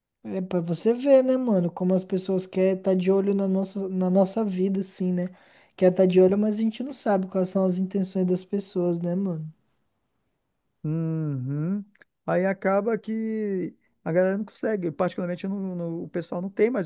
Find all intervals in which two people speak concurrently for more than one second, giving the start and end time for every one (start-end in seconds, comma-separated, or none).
none